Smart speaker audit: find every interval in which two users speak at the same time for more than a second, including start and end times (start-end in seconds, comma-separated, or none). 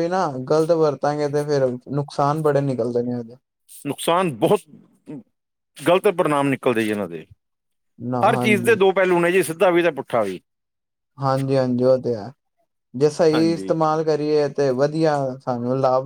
none